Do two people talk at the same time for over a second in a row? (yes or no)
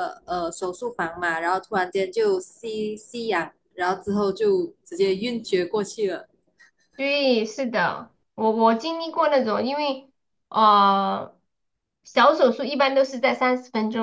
no